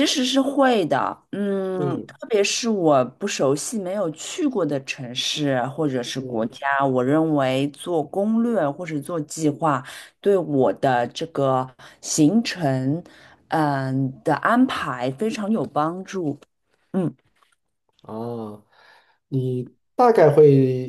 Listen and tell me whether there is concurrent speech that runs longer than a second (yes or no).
no